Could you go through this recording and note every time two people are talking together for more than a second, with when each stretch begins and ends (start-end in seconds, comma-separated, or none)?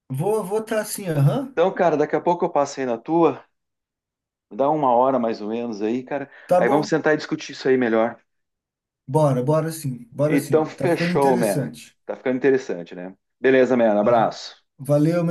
10.3-11.7